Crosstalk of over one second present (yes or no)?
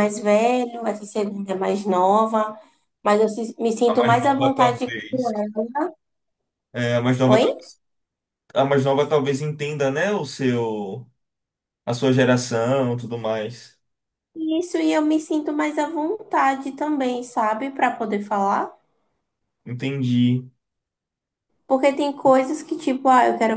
yes